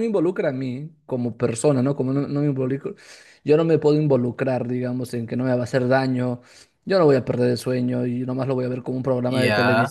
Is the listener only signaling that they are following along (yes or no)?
yes